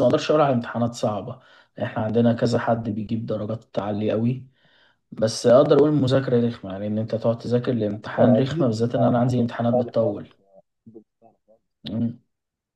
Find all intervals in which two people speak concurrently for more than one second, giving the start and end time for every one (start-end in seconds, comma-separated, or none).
8.2-10.3